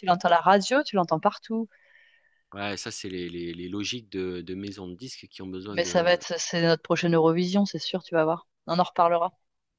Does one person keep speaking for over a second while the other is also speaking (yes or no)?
no